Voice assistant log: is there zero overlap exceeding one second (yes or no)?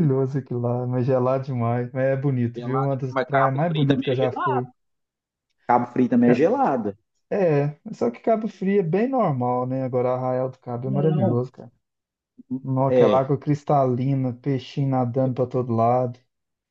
no